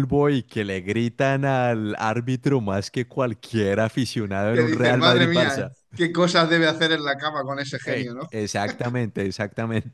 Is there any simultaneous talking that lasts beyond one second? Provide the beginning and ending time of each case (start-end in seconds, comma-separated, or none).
4.5-5.7